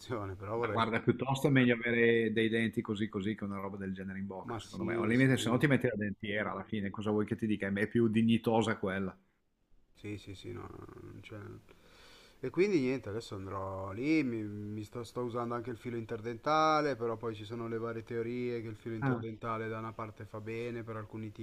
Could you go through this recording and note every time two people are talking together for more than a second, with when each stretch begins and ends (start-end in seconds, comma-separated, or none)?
4.4-5.7